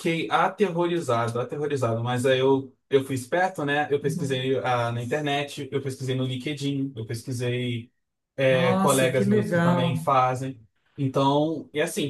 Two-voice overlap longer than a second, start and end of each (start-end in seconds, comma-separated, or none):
8.5-10.1